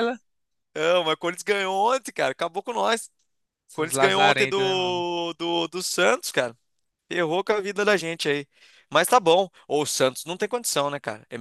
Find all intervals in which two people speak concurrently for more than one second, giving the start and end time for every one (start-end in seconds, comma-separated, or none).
3.7-5.0